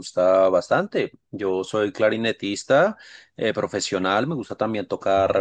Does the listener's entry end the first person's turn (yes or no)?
no